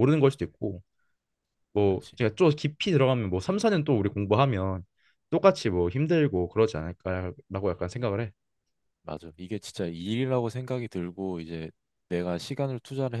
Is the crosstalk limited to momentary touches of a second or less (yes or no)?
yes